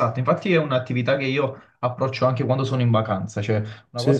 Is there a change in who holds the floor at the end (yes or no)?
no